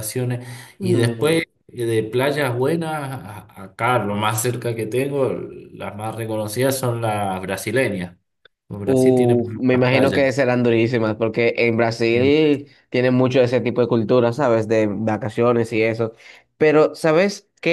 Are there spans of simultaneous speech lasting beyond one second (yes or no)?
yes